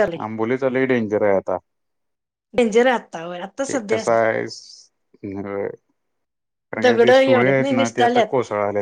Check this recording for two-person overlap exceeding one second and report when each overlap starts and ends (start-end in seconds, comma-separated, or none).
6.8-8.3